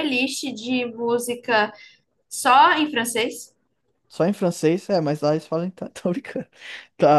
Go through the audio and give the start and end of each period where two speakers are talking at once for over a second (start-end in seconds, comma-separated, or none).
none